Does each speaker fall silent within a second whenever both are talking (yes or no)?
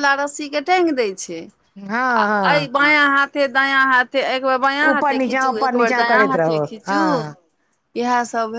no